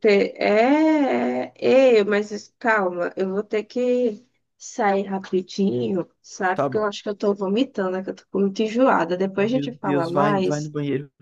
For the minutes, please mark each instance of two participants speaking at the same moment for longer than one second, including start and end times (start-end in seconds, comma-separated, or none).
9.3-10.7